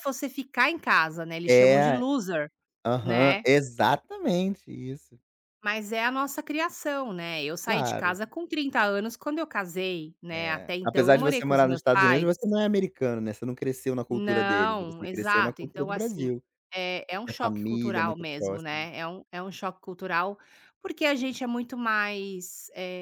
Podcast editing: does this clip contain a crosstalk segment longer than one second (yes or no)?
yes